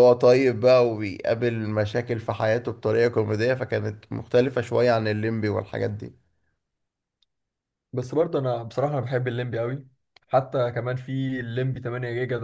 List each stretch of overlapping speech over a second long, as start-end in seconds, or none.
none